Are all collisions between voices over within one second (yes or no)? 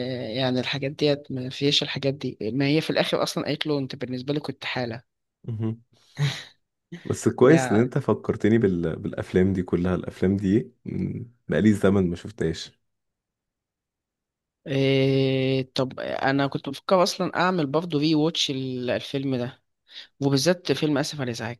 yes